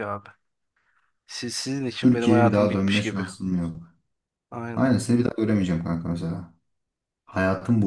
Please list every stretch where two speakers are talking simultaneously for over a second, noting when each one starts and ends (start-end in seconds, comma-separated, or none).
2.0-3.2